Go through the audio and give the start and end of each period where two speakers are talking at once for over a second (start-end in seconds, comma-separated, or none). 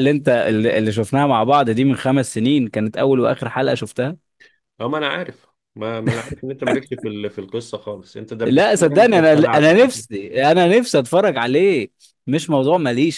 8.4-10.0